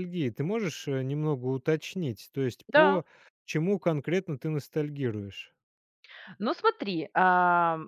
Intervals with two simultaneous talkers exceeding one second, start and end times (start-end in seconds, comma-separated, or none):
none